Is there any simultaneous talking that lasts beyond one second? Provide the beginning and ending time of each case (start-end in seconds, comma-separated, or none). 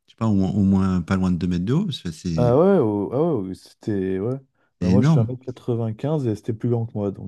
none